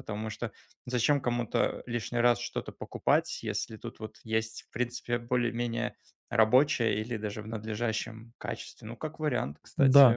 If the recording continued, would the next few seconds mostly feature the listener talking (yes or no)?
yes